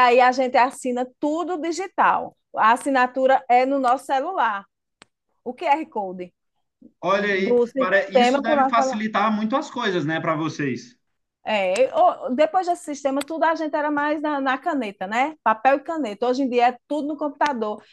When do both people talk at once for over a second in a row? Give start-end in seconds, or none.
7.2-9.0